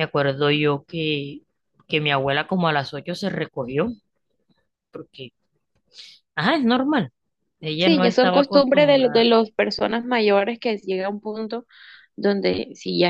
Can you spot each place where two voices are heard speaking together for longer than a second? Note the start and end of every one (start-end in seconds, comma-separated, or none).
7.8-9.3